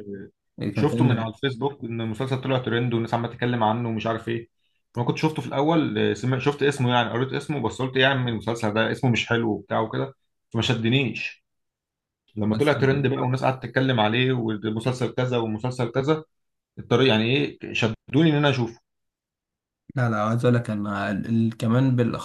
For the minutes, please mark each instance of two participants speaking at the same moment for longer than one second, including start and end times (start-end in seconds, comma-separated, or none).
none